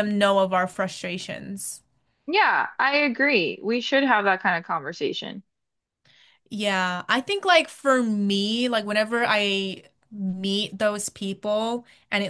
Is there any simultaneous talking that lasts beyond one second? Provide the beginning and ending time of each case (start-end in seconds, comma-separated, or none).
none